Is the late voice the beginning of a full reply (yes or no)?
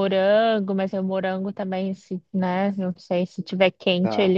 no